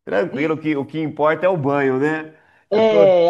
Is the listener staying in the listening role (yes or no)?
no